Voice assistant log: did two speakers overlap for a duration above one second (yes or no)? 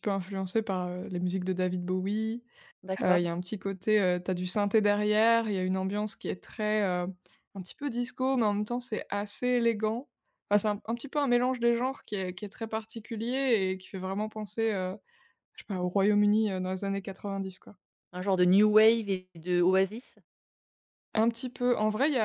no